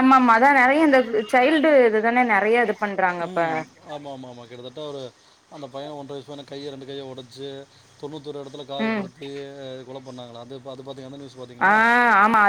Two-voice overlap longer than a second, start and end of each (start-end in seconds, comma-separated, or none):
none